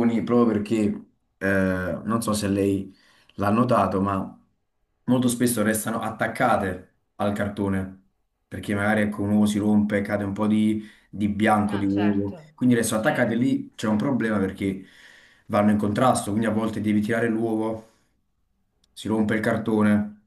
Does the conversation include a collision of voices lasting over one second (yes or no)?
yes